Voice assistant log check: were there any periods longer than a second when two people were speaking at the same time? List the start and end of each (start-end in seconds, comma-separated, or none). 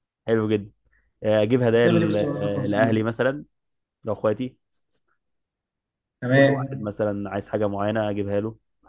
1.7-3.1